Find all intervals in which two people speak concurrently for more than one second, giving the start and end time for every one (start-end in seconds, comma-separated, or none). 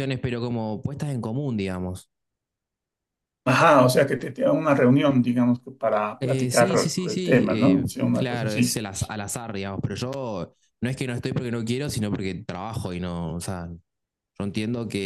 6.2-8.8